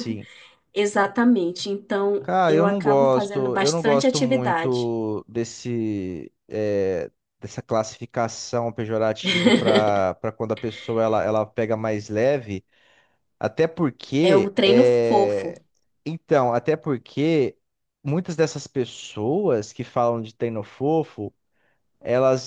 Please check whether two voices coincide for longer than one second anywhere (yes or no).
yes